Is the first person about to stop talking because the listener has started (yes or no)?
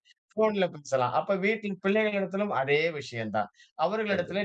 no